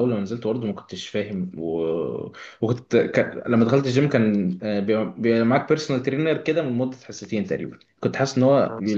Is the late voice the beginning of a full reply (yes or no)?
no